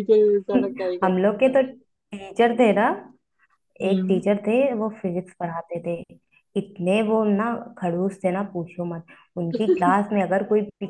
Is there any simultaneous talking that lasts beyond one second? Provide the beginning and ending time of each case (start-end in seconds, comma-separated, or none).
none